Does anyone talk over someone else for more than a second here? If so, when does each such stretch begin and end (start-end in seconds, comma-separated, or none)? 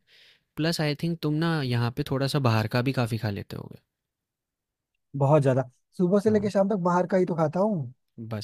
none